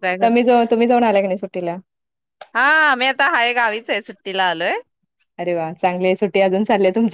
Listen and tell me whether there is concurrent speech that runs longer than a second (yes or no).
no